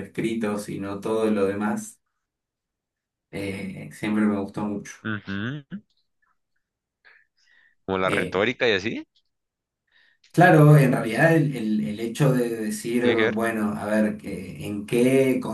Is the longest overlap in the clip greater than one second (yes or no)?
no